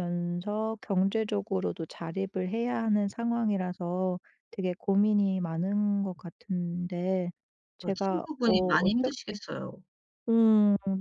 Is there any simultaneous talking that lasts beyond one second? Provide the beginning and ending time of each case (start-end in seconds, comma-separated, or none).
7.8-9.4